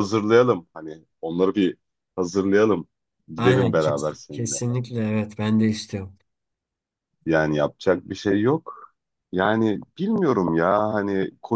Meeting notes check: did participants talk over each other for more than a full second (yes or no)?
yes